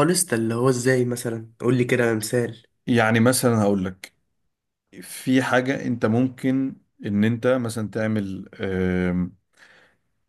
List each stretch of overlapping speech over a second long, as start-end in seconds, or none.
none